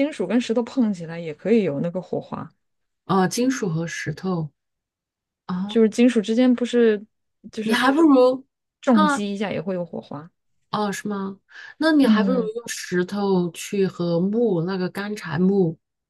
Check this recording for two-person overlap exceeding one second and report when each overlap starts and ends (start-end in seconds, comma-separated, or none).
none